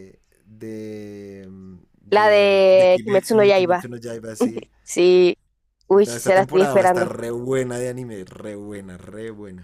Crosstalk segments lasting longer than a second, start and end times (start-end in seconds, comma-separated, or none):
2.1-3.9, 5.9-7.1